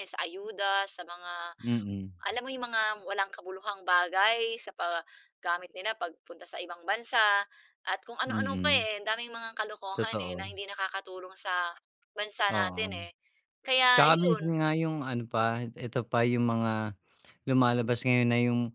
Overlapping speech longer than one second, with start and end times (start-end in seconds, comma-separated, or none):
none